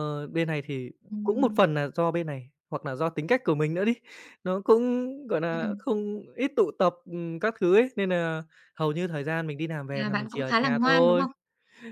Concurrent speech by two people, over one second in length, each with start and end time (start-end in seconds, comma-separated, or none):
9.9-11.2